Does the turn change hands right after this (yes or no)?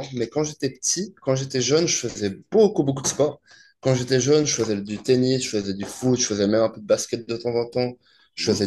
no